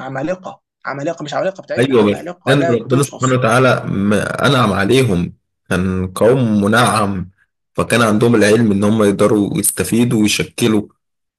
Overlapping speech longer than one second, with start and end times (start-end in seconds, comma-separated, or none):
1.8-3.3